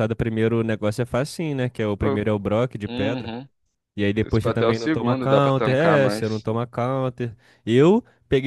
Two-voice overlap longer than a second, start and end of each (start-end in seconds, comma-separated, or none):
4.2-6.5